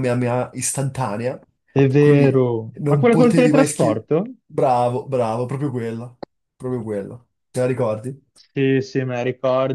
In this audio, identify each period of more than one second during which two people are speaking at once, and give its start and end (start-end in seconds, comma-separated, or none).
1.9-4.1